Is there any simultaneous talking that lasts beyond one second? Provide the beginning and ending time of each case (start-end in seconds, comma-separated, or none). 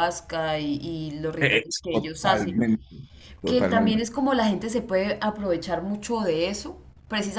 1.4-2.6